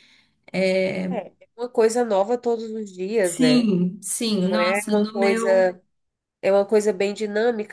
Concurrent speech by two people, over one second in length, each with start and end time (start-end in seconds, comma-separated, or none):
4.4-5.7